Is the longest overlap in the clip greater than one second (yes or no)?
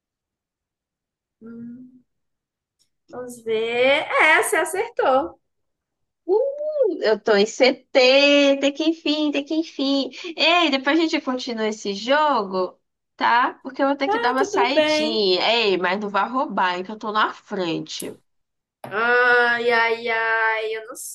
yes